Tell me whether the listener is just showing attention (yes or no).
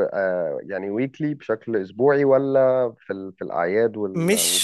no